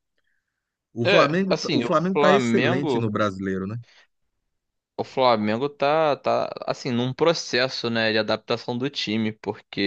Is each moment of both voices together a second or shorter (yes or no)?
no